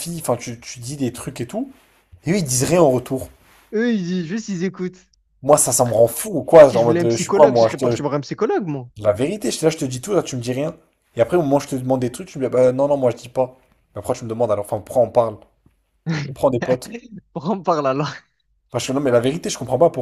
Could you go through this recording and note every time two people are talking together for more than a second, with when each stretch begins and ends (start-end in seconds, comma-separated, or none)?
6.6-8.0